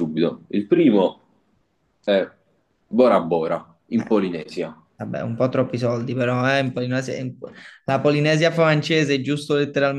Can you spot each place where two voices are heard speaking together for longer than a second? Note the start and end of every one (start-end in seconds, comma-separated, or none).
none